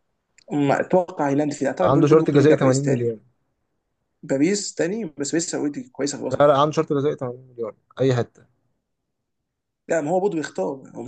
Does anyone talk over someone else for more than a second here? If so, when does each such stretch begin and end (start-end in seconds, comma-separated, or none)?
1.8-3.2